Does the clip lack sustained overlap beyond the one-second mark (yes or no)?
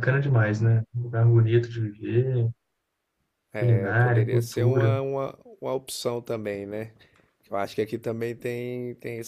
no